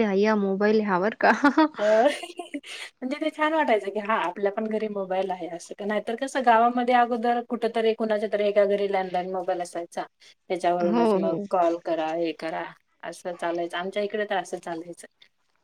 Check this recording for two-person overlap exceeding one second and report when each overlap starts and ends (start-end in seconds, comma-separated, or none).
none